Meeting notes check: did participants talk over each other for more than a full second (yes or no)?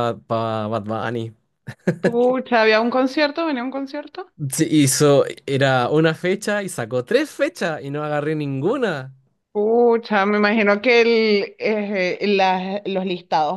no